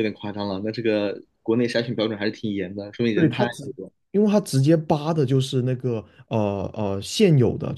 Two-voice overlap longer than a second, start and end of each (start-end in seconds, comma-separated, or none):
none